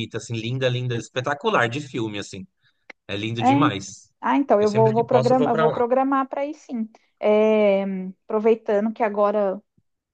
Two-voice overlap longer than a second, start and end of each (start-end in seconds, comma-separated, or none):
4.6-5.8